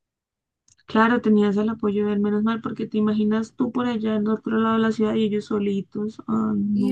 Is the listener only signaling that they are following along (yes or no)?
no